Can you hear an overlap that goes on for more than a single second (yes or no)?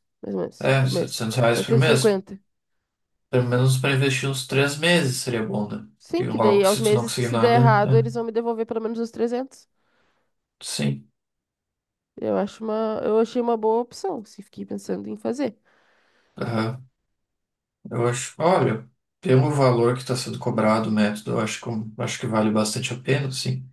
yes